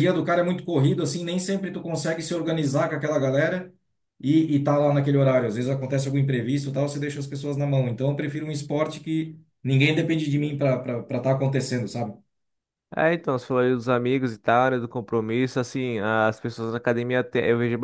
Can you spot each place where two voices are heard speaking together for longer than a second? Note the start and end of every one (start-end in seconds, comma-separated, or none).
none